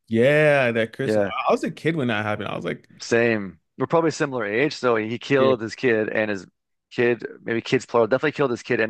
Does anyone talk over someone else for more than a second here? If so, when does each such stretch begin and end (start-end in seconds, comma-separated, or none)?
none